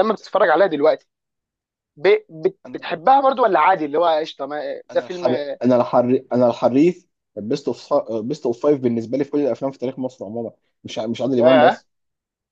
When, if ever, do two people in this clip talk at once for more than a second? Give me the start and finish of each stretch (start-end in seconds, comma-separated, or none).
none